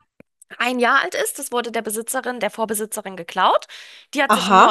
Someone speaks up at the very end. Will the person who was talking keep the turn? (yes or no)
yes